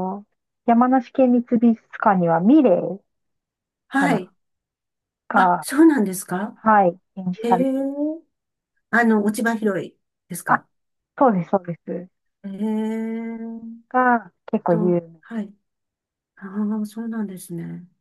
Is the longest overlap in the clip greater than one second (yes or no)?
no